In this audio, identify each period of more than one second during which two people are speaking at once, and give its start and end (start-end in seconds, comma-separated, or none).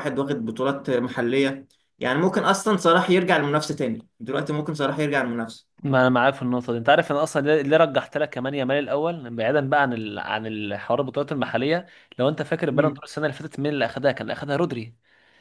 none